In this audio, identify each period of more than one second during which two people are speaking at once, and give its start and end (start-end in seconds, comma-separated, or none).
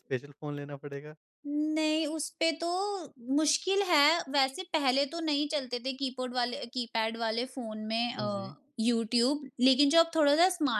none